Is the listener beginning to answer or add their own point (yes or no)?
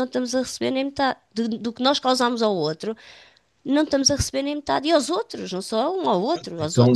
yes